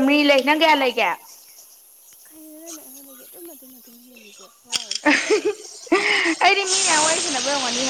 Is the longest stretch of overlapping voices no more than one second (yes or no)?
yes